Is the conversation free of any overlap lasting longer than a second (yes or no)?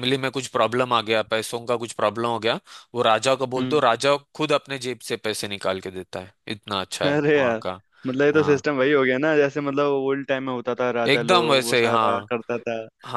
no